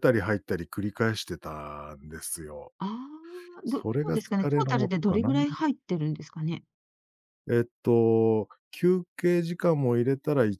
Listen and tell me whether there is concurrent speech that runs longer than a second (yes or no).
yes